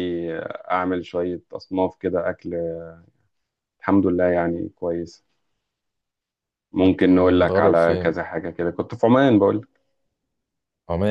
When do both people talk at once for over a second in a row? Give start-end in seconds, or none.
6.8-8.1